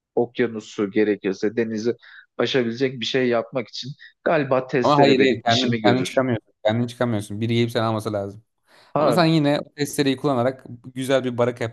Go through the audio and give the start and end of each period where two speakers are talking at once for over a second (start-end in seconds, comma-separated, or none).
4.8-6.2